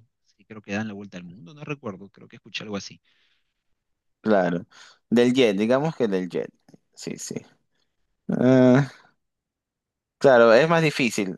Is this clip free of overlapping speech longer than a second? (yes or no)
yes